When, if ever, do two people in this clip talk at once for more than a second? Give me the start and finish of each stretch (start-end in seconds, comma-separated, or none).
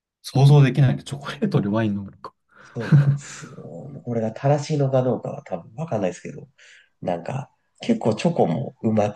none